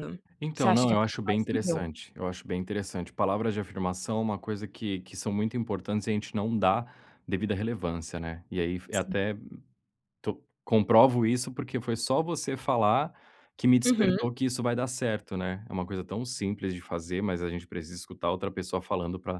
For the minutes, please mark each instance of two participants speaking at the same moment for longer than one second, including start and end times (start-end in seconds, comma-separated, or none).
0.5-1.8